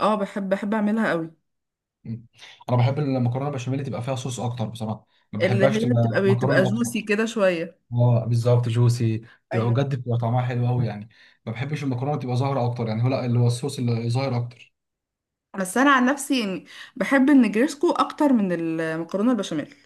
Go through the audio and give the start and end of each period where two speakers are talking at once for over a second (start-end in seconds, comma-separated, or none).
5.4-7.1